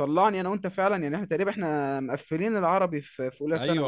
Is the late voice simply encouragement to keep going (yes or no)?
no